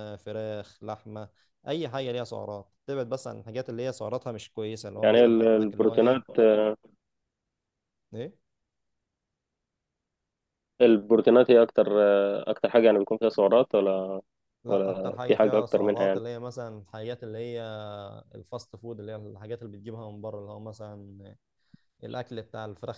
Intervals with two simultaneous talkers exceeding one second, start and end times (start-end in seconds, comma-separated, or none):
5.0-6.2, 14.7-16.2